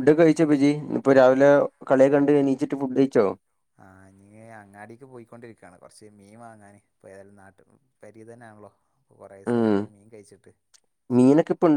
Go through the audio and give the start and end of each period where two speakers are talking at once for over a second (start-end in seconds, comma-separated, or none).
none